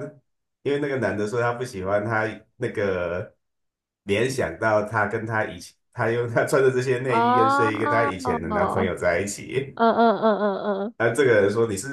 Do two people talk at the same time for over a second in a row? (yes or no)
yes